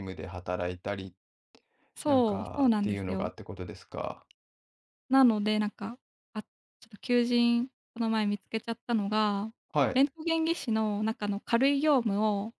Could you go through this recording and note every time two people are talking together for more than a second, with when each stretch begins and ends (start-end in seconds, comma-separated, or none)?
2.0-3.3